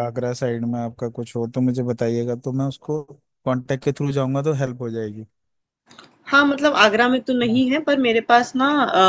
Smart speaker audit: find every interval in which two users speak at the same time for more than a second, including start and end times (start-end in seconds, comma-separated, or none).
none